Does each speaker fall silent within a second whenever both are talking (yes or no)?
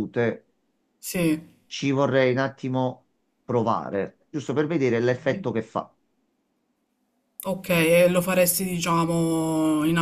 yes